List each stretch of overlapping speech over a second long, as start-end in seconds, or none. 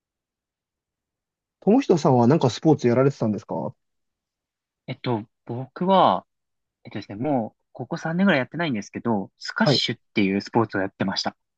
none